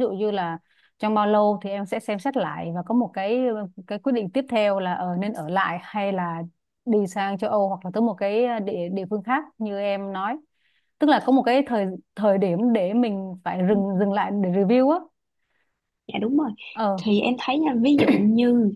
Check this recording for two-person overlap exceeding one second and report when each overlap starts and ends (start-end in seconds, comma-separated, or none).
none